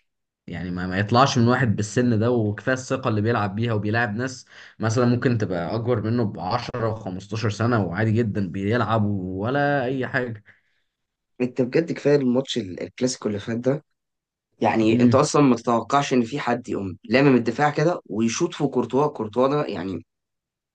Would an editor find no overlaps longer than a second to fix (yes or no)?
yes